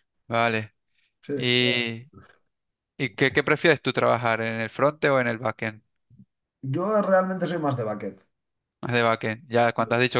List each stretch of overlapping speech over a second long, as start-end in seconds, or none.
none